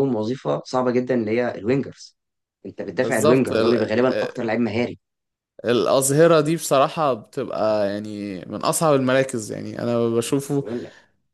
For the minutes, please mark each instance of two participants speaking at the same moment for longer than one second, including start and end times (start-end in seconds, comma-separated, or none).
3.0-4.4